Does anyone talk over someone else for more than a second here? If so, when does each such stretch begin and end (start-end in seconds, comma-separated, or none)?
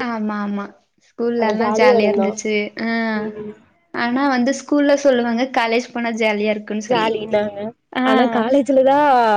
none